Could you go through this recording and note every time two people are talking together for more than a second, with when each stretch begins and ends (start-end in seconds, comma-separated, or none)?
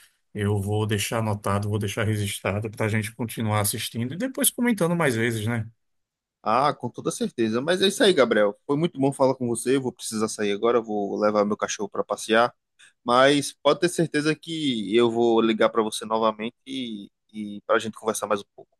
none